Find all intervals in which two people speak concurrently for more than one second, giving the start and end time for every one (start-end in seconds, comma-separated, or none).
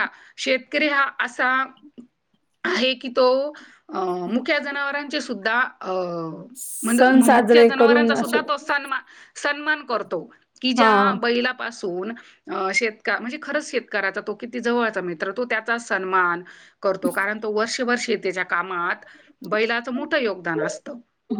6.8-8.4